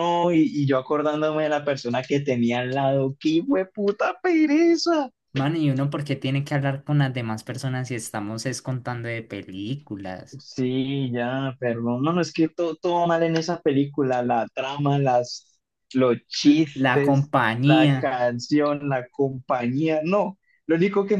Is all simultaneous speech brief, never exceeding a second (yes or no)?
no